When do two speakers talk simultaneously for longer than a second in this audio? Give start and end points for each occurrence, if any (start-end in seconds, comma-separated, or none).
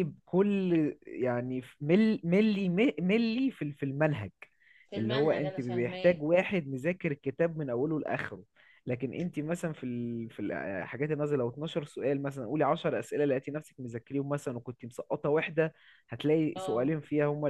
5.0-6.2